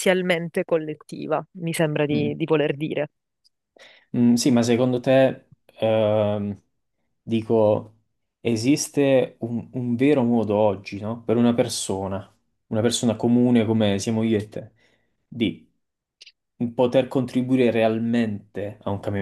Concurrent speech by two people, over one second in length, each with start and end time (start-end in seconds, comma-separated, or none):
none